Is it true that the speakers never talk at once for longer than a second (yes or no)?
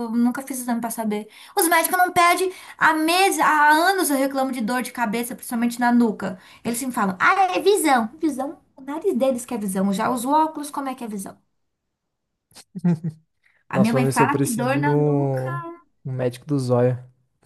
no